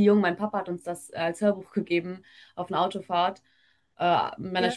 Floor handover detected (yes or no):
no